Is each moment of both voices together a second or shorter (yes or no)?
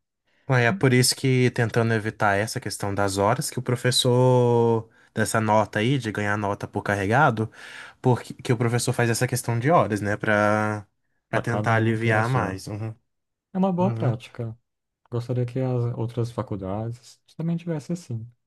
no